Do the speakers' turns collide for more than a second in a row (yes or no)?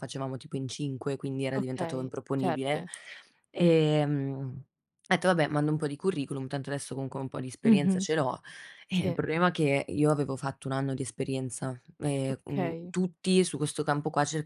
yes